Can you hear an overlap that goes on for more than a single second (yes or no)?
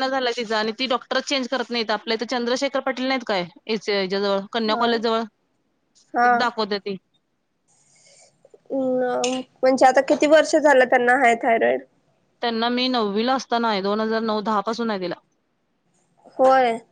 no